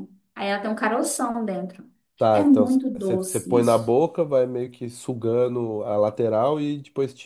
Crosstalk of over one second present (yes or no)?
yes